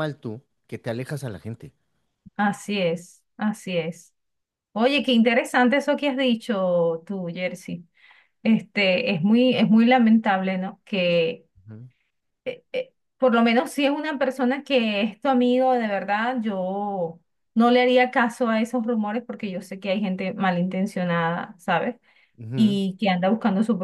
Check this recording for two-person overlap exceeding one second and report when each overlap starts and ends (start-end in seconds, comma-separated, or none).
none